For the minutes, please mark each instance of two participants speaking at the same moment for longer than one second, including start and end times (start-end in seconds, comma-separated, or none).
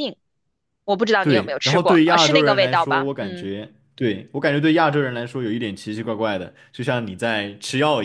1.2-3.5